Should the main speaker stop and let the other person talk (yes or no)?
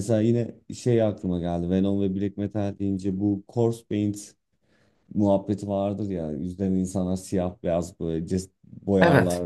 no